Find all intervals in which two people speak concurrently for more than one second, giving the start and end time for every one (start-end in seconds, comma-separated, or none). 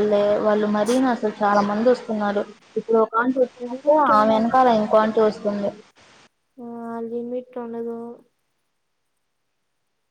3.6-5.1